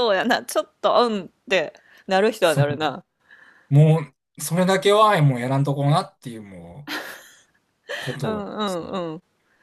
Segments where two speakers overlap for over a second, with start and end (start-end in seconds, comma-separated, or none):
none